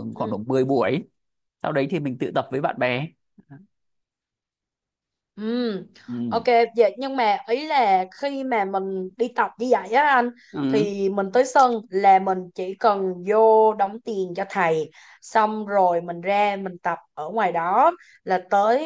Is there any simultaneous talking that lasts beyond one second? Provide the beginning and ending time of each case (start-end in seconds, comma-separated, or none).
none